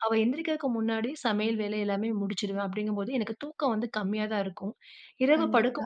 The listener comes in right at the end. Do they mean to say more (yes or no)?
no